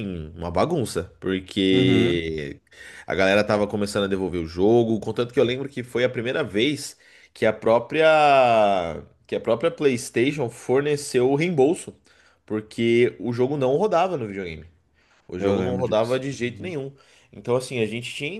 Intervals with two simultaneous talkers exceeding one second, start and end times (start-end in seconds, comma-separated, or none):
15.4-16.8